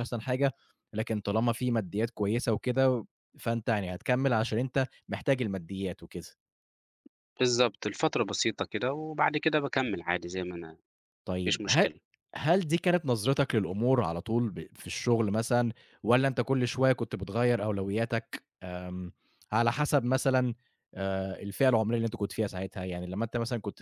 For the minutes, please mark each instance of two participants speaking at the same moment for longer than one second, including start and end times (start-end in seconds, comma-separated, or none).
none